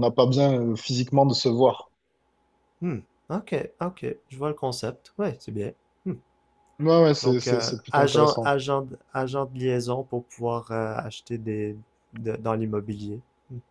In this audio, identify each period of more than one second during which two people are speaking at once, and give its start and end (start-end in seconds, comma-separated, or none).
7.2-8.5